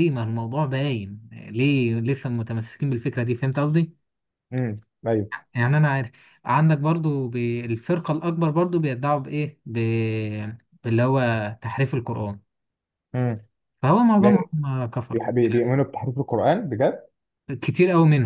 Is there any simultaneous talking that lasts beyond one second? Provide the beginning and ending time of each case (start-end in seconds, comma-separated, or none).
none